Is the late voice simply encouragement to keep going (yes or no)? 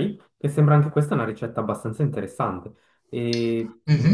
yes